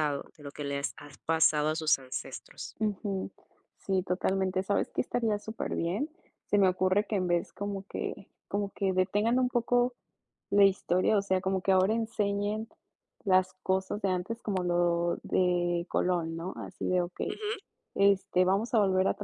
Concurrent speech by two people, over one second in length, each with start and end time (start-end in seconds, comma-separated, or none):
none